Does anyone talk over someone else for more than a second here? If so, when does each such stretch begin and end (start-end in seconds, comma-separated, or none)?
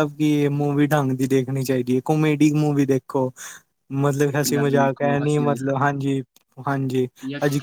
4.4-6.0